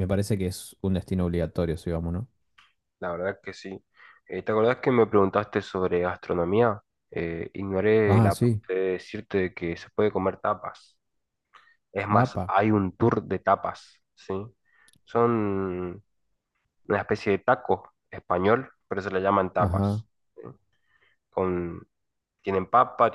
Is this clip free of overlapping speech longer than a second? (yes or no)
yes